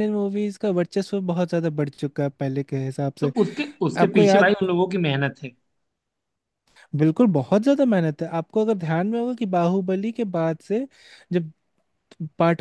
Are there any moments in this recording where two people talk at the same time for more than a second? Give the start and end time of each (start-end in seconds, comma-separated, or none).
none